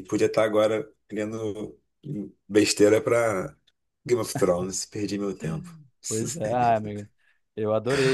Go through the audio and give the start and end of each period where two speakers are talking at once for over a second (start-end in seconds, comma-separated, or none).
none